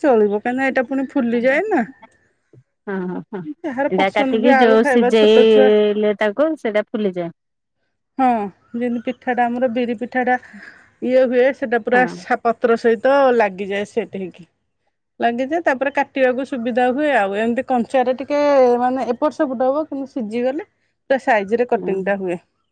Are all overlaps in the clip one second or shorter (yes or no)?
no